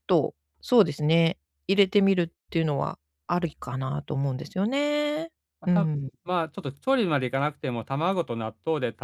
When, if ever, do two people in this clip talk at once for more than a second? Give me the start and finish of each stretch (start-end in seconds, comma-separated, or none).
none